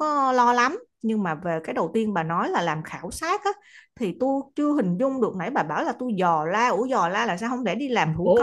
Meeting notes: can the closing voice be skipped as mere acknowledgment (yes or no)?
no